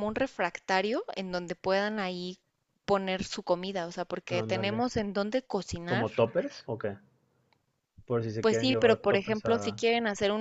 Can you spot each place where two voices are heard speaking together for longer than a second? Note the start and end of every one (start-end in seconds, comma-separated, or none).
8.4-9.8